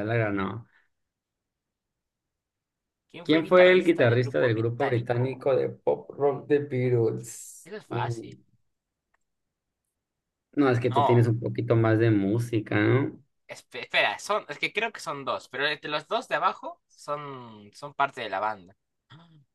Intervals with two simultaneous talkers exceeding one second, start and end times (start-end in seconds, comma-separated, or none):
3.2-5.5